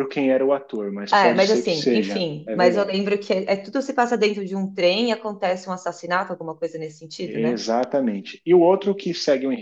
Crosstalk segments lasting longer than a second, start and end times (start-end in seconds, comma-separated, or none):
1.1-3.0